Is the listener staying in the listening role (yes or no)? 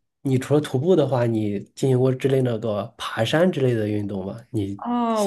no